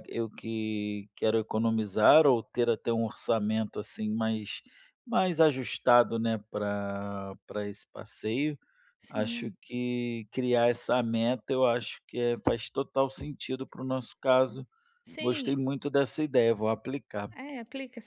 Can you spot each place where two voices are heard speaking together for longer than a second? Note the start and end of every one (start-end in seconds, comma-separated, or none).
none